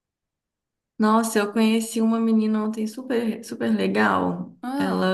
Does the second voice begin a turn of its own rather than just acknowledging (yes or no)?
no